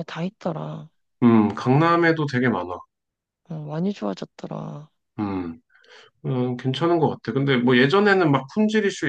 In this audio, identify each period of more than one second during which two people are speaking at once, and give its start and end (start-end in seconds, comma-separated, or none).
none